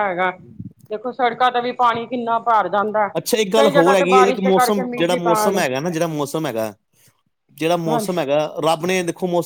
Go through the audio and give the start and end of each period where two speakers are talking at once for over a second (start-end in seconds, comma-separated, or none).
3.6-5.6